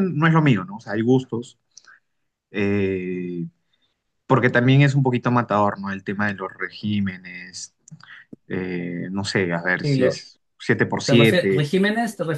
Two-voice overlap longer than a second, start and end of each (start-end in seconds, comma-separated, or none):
none